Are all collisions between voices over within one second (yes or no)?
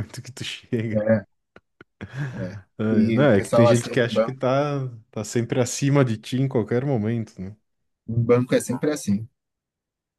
no